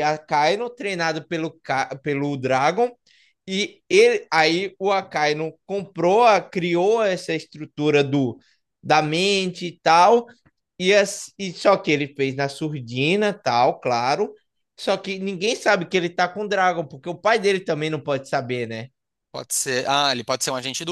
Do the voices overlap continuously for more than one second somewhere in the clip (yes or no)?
no